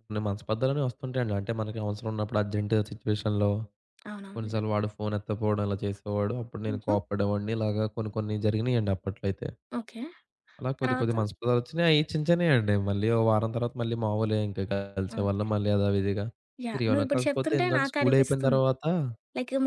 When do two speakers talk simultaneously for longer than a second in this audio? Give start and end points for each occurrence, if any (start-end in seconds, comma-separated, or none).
16.7-18.6